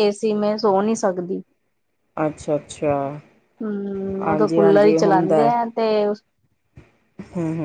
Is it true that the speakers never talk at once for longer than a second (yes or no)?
no